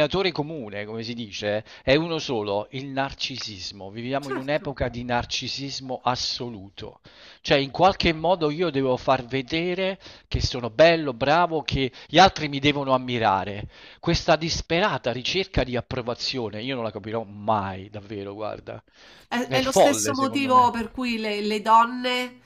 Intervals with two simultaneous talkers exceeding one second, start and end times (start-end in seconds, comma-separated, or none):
19.4-20.7